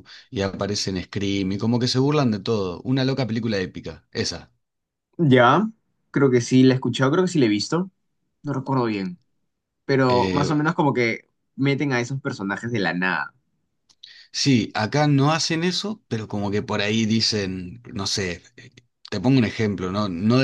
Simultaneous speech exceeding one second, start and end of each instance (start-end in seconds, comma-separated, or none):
none